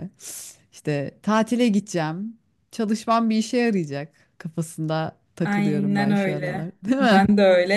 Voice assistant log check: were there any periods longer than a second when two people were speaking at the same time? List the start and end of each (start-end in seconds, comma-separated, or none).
5.4-7.2